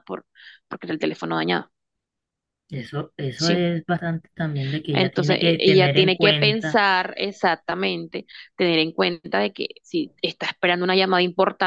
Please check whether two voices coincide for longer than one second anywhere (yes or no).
yes